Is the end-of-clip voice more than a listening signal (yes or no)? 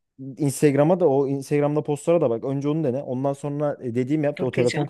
no